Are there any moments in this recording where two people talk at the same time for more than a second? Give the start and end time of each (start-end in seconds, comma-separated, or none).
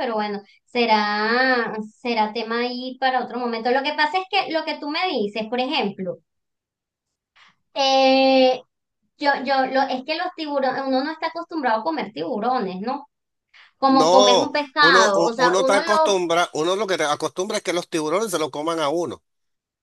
13.9-16.2